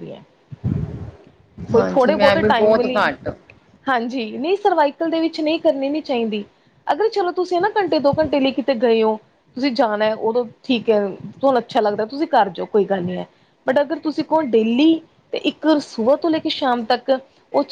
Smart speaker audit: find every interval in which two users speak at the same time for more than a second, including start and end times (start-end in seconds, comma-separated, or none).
1.8-3.0